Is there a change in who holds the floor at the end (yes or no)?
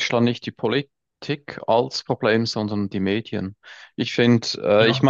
no